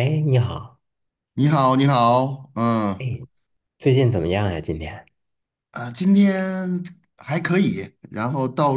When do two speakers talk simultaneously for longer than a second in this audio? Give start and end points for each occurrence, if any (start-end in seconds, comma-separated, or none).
none